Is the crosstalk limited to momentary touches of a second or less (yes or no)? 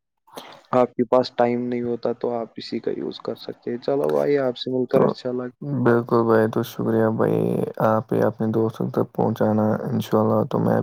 yes